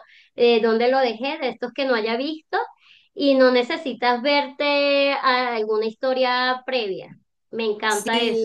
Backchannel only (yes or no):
no